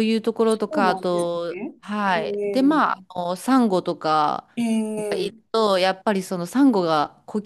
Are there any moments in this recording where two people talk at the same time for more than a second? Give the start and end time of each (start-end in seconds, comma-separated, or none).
0.7-2.8